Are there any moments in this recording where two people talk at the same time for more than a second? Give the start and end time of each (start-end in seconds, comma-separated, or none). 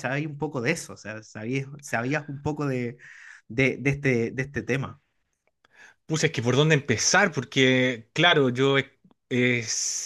none